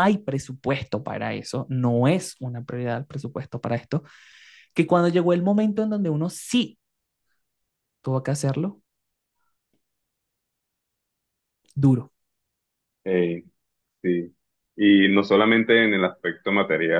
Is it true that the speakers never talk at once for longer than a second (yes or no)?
yes